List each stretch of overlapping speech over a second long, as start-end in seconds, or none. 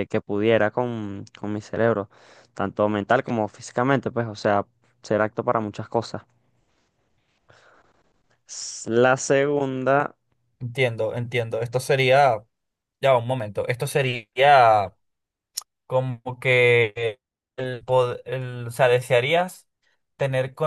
none